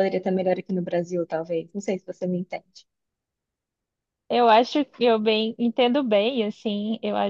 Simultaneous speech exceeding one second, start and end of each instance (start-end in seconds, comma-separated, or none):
none